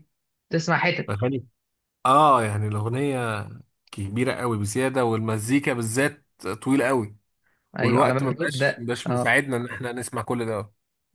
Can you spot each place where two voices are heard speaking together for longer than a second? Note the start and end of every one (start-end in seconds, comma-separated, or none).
7.8-9.4